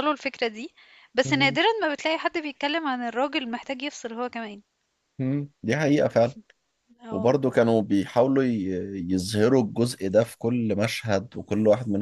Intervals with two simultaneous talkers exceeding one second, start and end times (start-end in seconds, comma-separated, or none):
none